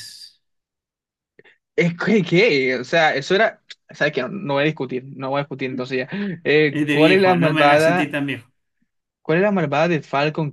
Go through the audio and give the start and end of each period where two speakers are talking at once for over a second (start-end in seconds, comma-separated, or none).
6.7-8.2